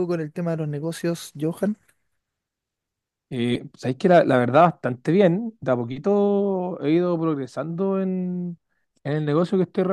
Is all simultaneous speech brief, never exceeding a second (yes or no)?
yes